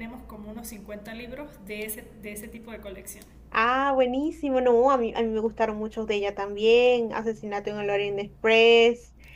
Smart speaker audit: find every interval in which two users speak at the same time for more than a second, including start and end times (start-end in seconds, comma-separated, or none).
none